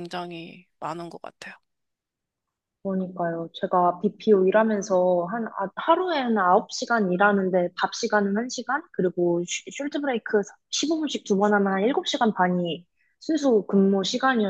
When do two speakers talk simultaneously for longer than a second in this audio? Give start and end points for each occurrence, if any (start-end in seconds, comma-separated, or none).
none